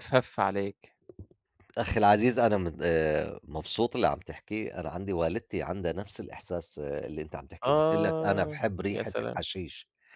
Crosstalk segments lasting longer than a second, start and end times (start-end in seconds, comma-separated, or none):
7.6-9.4